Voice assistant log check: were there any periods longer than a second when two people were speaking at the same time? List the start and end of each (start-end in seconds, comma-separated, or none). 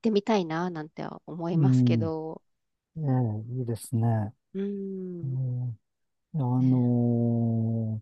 none